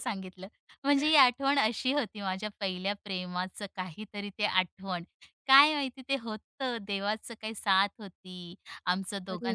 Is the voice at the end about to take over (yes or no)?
no